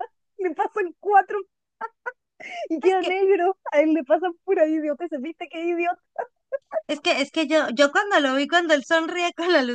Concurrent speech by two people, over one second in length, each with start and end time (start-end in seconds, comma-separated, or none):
none